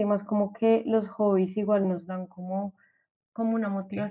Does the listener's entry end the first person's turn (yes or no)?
no